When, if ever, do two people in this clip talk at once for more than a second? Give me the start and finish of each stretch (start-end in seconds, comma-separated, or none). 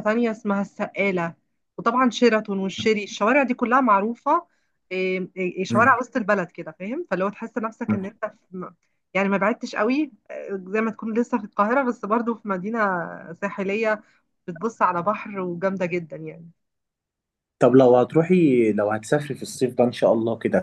none